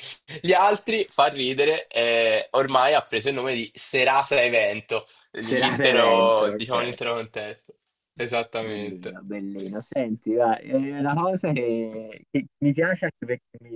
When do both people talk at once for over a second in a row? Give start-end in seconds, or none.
5.4-6.8